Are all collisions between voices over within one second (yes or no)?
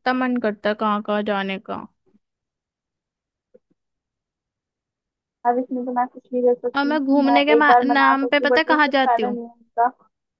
no